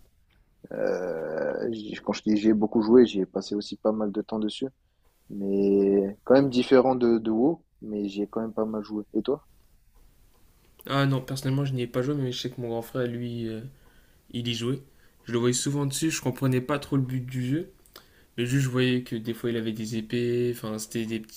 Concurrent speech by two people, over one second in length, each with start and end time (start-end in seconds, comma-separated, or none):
none